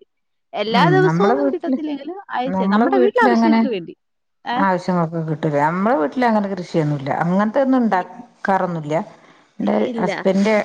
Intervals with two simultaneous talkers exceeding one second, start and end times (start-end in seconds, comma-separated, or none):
none